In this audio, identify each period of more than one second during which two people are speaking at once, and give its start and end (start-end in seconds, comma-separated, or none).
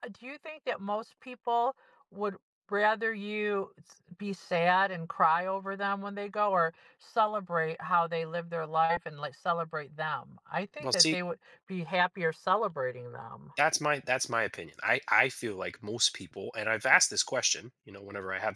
none